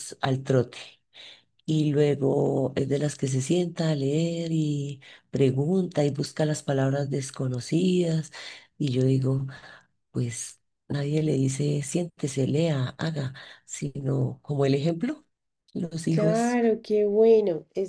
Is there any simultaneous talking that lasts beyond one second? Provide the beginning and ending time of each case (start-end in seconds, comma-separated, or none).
none